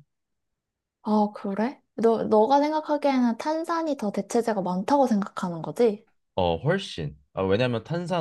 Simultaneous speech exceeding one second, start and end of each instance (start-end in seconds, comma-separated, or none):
none